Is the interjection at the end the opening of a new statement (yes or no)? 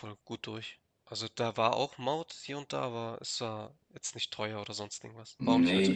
yes